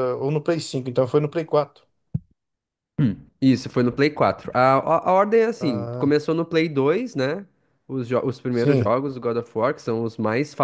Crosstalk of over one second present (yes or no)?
no